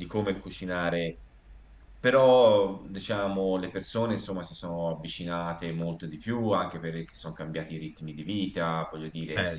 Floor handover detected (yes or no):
no